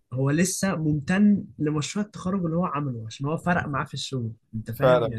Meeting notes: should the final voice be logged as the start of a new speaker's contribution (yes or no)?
yes